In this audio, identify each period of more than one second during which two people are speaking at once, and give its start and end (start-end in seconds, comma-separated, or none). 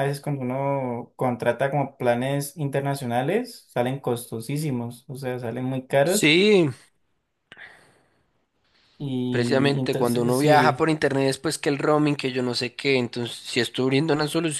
9.3-10.8